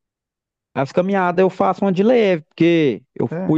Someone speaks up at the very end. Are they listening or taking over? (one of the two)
listening